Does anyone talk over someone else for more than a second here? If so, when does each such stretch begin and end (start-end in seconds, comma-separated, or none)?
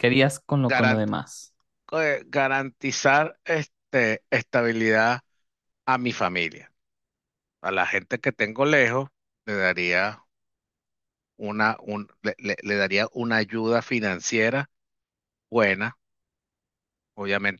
none